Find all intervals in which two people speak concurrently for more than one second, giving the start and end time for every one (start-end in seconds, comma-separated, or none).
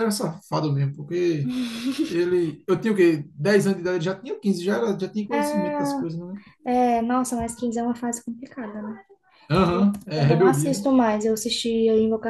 9.6-10.8